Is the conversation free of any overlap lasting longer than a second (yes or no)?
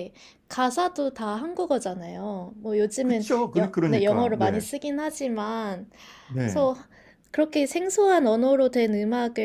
no